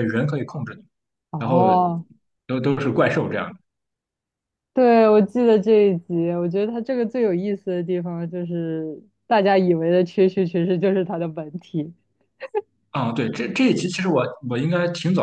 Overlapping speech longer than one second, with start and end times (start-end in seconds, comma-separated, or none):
none